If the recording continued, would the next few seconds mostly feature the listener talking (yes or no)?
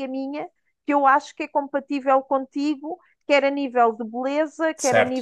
no